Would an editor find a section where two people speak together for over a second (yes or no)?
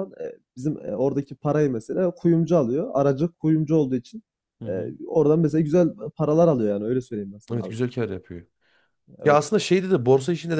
no